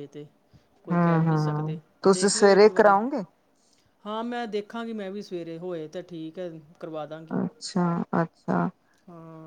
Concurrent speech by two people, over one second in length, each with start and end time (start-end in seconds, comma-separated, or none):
0.9-3.0